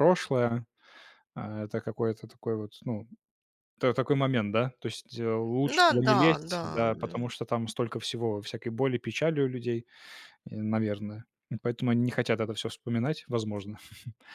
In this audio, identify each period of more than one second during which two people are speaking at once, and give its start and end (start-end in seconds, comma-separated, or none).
5.8-7.3